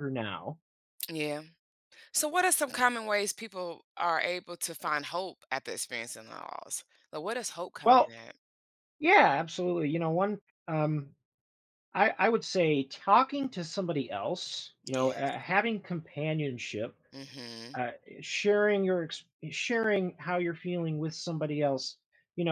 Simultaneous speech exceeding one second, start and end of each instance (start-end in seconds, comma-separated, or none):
none